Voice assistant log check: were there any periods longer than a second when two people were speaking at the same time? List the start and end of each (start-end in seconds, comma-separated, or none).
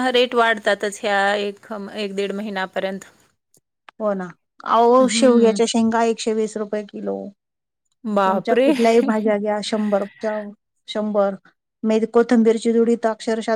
none